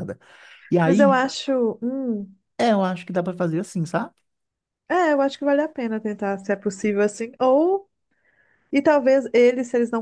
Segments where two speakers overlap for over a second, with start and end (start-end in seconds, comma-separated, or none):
none